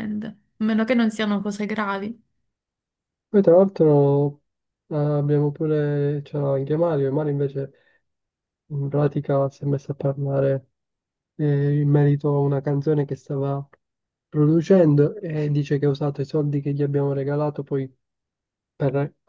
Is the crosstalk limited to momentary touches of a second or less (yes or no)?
yes